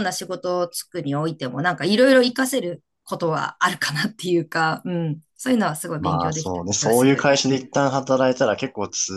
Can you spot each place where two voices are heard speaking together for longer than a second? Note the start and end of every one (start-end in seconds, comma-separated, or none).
6.0-7.3